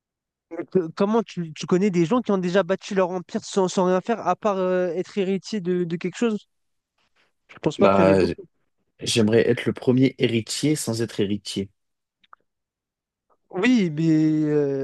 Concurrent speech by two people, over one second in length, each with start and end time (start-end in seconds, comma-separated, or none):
none